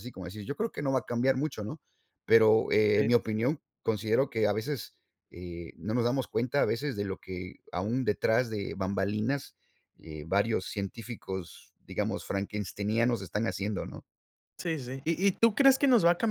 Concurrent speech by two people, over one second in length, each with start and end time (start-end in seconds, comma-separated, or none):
none